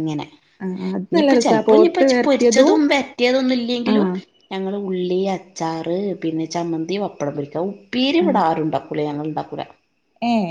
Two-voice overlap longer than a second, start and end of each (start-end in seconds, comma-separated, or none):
1.2-2.7